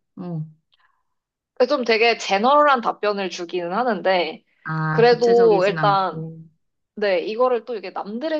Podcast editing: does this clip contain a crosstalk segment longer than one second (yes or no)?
yes